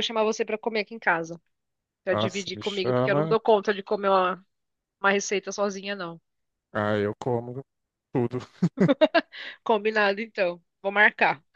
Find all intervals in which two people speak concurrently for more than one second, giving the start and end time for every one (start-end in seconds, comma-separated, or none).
2.1-3.4